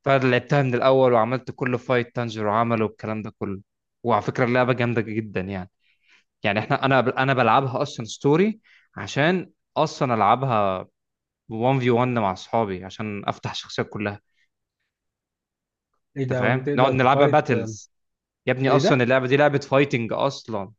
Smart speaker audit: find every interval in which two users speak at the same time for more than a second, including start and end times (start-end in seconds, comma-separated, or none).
16.2-17.8